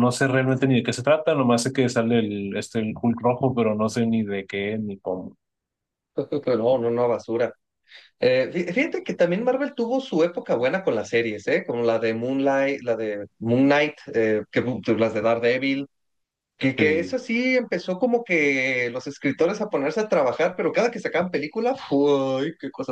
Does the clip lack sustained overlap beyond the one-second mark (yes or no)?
yes